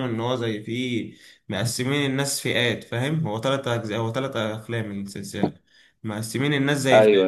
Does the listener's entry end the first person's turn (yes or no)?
no